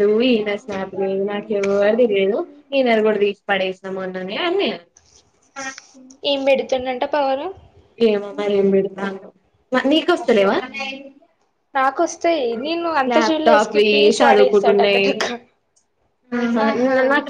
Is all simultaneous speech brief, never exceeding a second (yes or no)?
no